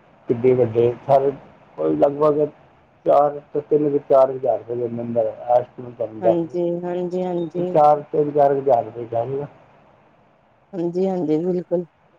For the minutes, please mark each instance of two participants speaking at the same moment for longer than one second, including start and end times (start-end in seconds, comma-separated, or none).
6.2-7.7